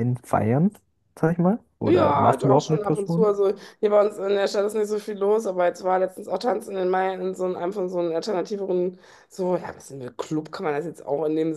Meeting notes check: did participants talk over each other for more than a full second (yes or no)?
yes